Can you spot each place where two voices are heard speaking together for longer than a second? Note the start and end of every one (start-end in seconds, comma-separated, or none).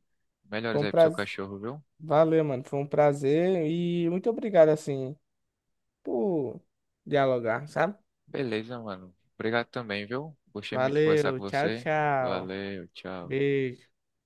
10.7-12.6